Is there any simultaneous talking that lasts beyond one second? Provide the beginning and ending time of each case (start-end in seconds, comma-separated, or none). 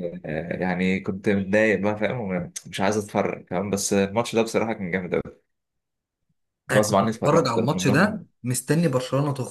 6.7-8.3